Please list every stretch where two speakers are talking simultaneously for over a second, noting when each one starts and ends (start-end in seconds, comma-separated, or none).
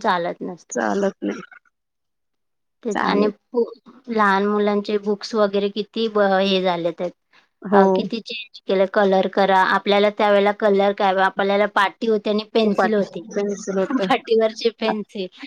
none